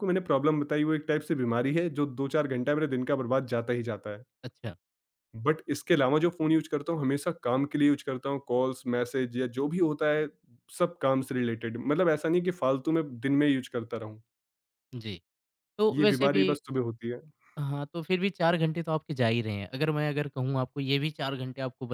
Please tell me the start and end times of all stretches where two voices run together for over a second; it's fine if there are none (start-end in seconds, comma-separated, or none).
none